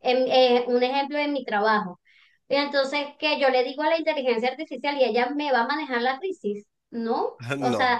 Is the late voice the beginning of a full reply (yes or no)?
no